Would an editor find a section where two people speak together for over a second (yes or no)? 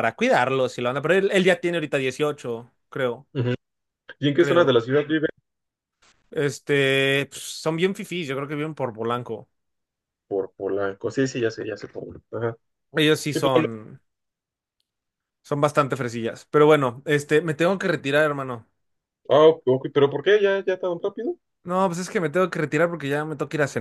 no